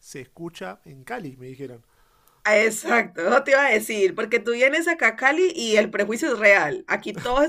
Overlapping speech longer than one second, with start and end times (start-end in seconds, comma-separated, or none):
none